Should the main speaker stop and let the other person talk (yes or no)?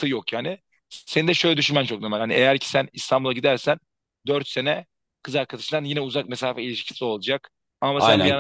yes